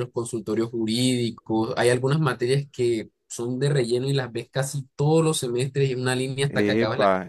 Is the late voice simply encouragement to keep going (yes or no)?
no